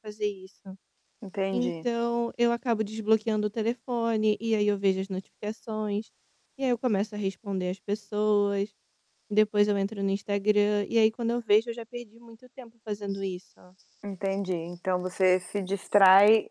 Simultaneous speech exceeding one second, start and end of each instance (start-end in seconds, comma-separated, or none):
none